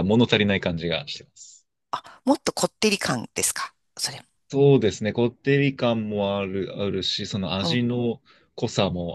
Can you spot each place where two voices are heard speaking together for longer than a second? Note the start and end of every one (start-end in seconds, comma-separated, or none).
none